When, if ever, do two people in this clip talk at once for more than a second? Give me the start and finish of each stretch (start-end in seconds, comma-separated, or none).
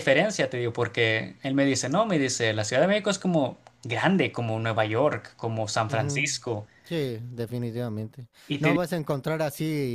none